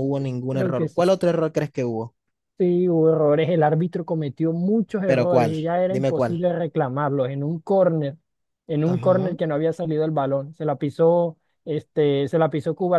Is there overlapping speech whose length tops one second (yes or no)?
yes